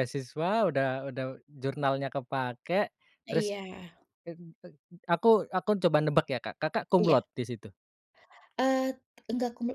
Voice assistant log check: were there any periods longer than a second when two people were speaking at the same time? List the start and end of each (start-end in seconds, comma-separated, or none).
none